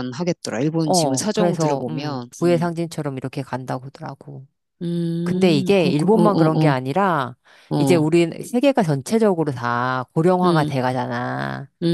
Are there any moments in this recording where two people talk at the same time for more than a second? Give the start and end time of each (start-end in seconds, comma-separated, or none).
0.8-2.7, 5.2-6.7